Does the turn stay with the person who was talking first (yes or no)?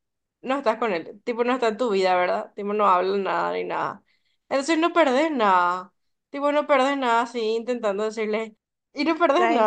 yes